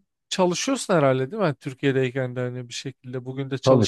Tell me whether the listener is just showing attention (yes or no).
no